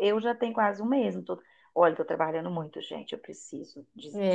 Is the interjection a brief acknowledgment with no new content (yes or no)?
no